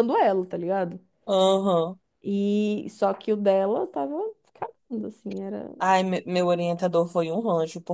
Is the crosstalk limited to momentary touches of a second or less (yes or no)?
yes